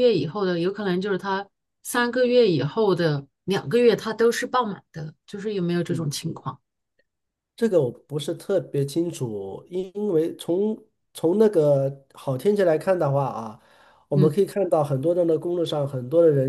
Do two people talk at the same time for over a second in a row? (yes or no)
no